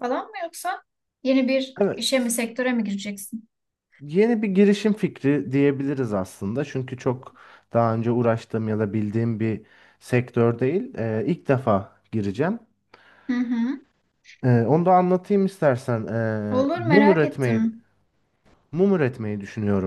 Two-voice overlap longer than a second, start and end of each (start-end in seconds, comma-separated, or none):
16.5-17.7